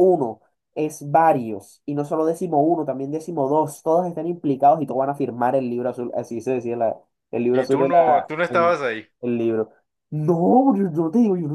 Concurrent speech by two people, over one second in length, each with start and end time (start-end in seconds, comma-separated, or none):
7.5-8.8